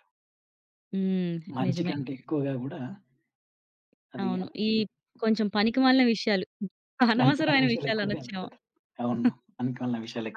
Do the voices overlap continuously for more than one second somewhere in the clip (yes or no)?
yes